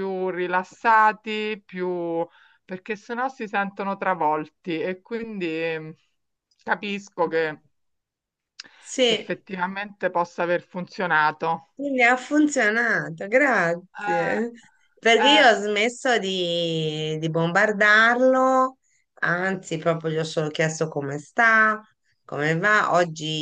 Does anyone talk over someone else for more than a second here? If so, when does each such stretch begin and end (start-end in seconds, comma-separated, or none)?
none